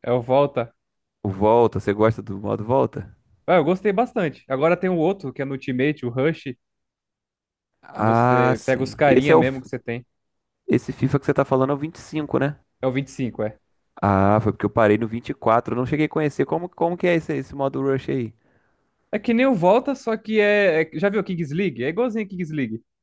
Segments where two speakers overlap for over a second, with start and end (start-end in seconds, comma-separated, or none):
7.9-9.6